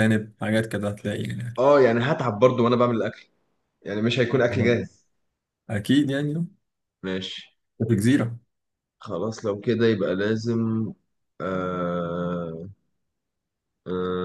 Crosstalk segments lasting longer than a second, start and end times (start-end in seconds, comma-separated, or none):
none